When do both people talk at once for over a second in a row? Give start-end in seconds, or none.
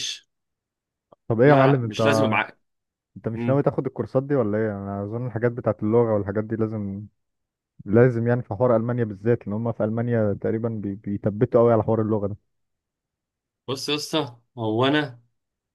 none